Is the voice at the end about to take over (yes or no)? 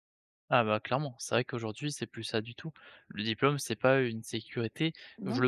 no